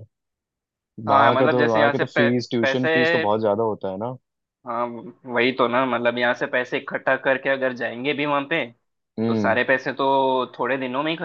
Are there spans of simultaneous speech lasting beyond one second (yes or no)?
yes